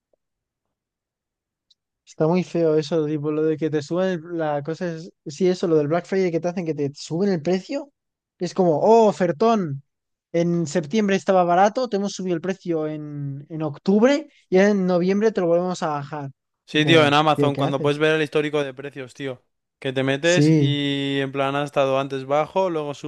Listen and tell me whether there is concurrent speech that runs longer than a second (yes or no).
yes